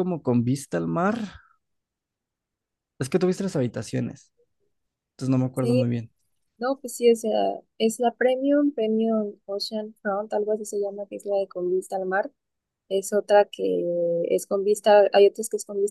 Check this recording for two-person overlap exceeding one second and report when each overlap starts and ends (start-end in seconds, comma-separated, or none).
none